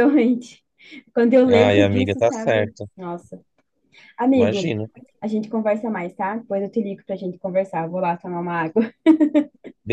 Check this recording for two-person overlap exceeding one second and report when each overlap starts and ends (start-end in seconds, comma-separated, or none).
1.4-2.9